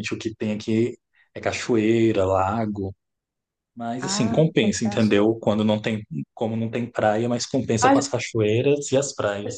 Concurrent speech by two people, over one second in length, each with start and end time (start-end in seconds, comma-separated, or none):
4.0-5.3